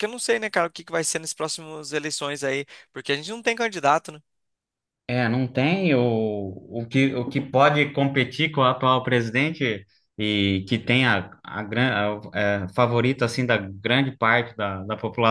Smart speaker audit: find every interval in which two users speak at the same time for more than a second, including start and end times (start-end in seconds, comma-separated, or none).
none